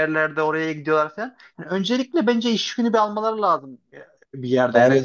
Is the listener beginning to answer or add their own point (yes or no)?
yes